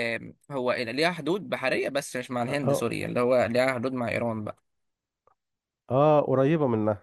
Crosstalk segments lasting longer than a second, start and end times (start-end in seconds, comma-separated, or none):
none